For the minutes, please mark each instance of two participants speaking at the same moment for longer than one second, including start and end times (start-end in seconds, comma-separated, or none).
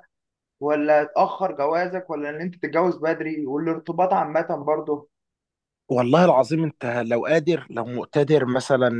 none